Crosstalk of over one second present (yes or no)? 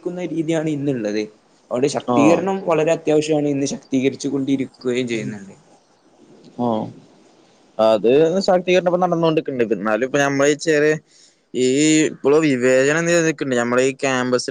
no